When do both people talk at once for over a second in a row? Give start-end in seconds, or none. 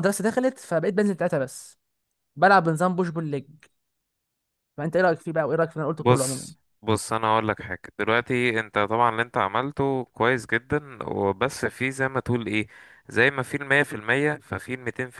none